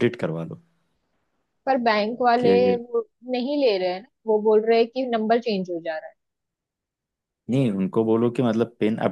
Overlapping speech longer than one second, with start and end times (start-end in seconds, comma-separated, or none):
none